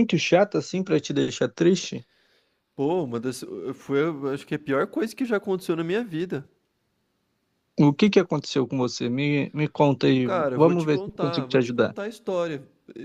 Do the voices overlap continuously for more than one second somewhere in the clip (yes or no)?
yes